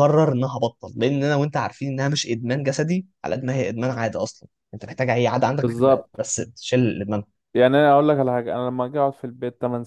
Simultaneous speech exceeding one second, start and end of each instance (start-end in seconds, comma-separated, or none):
none